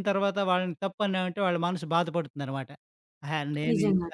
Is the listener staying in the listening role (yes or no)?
yes